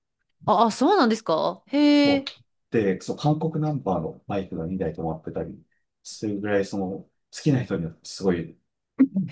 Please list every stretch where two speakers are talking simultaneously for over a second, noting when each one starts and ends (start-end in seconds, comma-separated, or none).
none